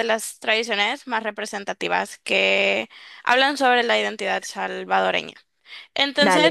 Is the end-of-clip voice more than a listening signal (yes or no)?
no